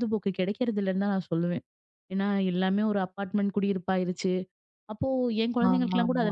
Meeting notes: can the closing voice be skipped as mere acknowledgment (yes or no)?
yes